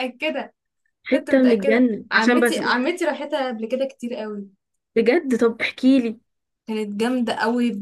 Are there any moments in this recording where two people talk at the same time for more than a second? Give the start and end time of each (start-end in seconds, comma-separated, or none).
1.1-2.6